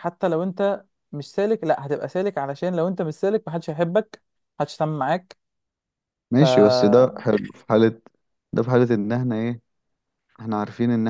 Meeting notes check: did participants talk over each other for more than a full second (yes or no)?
no